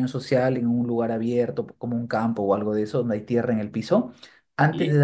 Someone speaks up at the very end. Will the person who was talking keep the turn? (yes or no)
yes